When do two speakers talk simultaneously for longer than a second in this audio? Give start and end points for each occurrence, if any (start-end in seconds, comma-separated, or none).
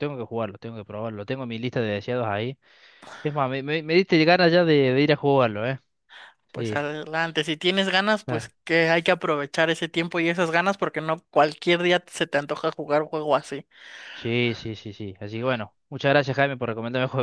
none